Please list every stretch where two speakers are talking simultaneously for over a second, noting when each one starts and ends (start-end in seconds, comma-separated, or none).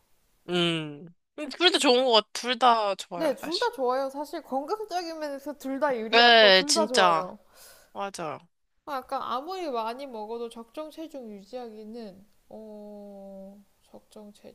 6.1-7.3